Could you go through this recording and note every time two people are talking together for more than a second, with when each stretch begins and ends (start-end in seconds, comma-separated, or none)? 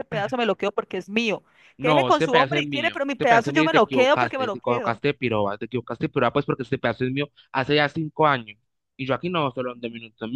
1.8-5.0